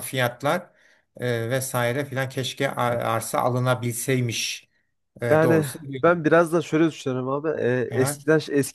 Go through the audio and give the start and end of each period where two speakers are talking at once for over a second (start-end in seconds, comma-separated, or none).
none